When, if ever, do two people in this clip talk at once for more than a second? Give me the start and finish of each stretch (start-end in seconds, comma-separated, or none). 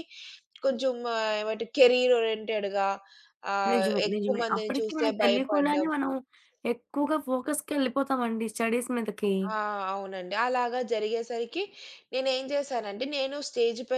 3.7-5.9